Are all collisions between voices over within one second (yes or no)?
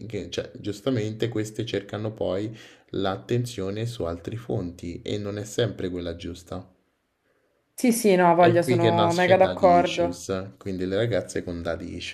no